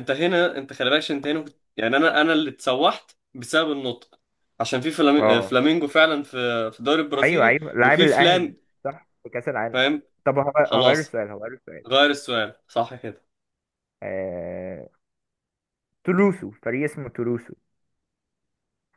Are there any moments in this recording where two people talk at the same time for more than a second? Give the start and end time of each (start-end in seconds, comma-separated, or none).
7.2-8.6